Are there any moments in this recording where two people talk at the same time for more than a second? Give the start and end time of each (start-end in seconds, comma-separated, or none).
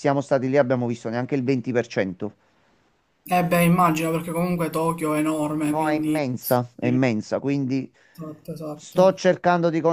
5.7-7.0